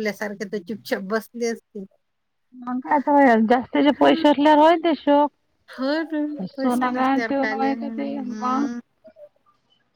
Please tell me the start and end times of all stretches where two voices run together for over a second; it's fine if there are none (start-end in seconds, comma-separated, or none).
6.1-8.7